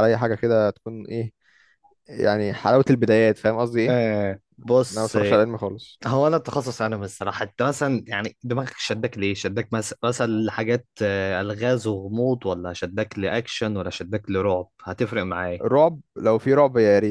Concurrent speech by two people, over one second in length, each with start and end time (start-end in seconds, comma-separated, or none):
none